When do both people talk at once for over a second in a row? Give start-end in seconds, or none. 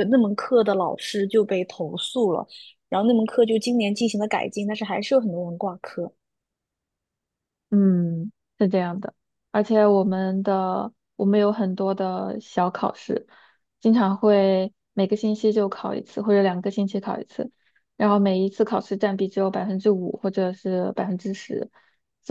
none